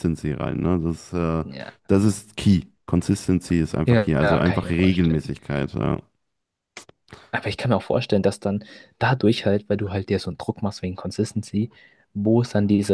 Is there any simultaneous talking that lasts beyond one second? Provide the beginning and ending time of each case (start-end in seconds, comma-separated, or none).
3.9-5.3